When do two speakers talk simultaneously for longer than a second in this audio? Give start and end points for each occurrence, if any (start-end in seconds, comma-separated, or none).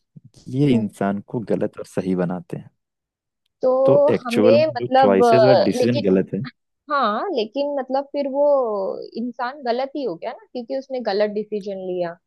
3.8-6.0